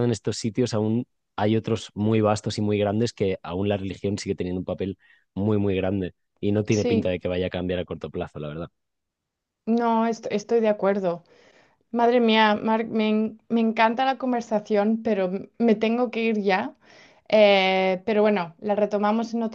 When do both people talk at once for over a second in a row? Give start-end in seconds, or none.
none